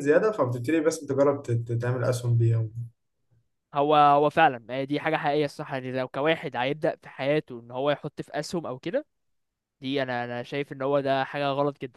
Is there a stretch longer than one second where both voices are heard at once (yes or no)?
no